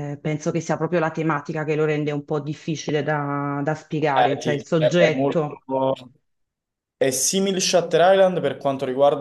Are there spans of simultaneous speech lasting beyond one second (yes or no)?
yes